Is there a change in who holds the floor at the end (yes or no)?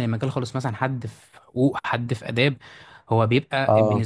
no